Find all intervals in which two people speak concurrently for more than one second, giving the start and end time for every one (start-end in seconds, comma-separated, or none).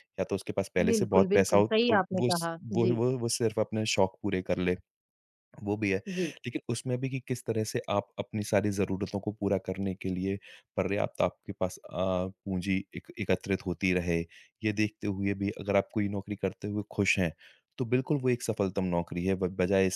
0.9-3.0